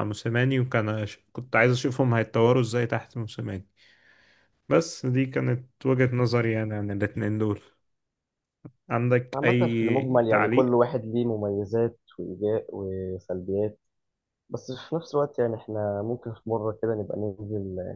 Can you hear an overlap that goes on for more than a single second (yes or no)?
yes